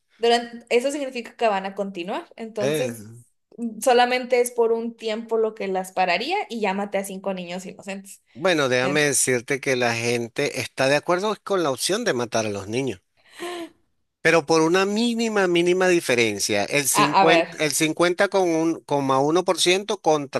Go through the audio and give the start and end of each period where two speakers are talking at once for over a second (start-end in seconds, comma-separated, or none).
none